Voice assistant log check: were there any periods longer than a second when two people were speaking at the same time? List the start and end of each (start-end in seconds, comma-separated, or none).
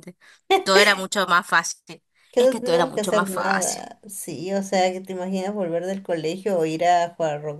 2.3-3.9